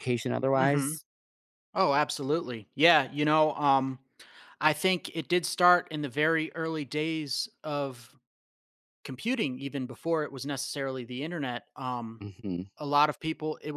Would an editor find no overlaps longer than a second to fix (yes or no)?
yes